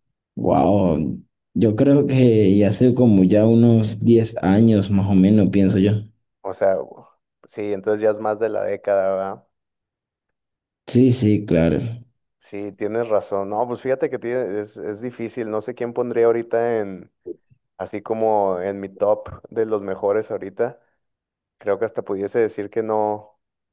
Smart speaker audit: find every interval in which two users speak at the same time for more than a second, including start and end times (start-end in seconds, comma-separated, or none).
none